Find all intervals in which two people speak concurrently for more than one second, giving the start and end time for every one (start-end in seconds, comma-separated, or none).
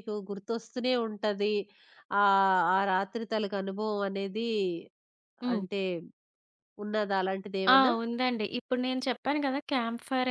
none